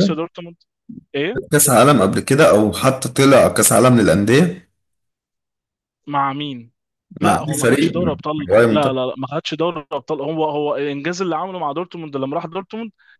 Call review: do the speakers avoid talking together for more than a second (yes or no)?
no